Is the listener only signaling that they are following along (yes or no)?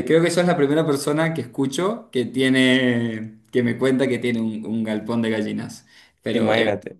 yes